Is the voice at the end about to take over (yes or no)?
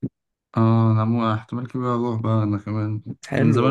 no